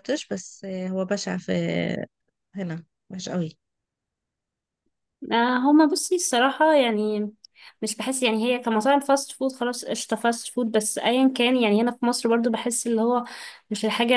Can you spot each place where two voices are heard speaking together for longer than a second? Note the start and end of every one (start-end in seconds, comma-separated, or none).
none